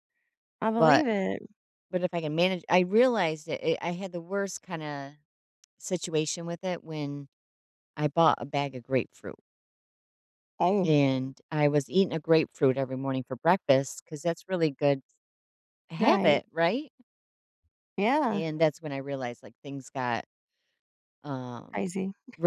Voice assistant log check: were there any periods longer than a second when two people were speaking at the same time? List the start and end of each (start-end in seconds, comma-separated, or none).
none